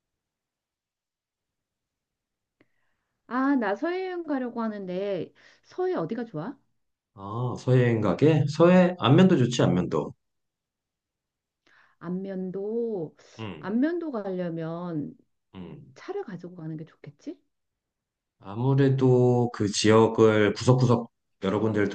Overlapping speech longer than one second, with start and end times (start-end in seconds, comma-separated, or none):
none